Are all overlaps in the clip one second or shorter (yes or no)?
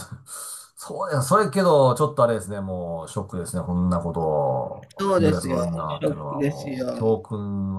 no